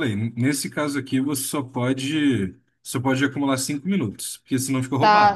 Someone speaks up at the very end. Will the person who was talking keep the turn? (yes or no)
no